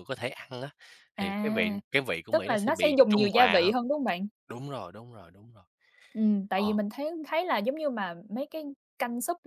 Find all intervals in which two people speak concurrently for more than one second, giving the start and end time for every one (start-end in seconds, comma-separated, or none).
2.3-3.8